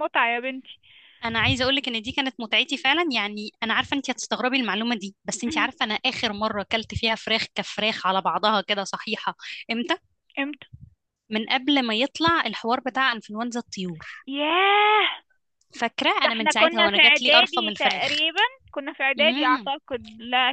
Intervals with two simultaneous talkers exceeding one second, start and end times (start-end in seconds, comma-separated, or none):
16.2-18.2